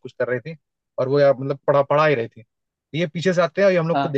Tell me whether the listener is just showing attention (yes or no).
yes